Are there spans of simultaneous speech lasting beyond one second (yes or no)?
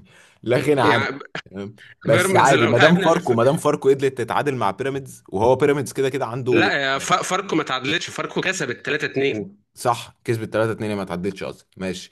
yes